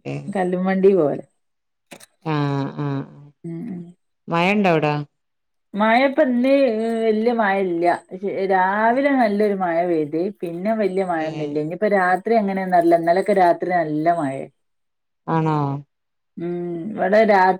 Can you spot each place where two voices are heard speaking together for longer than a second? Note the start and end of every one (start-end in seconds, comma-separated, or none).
none